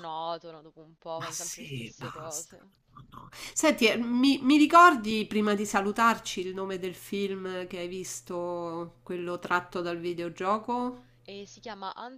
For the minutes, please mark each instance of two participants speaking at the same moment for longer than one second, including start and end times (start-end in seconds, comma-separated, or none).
1.1-2.6